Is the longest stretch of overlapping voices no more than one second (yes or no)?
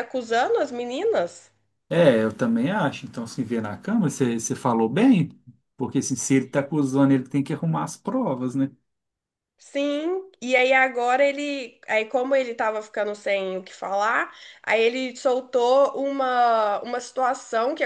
yes